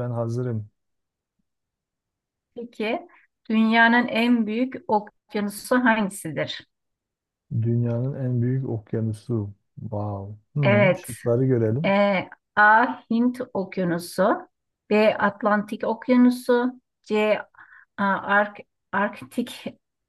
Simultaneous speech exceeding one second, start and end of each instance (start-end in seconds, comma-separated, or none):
none